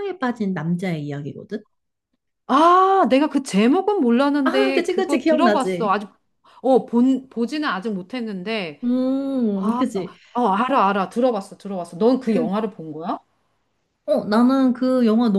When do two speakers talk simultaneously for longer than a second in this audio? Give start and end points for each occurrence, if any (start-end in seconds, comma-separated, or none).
4.4-6.0